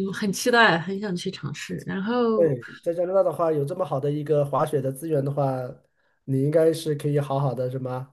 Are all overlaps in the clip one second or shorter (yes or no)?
yes